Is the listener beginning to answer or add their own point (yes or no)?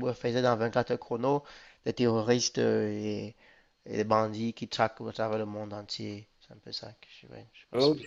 yes